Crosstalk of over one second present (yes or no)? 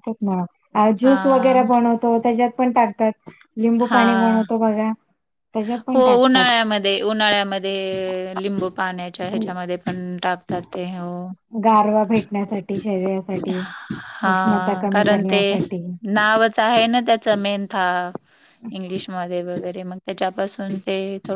no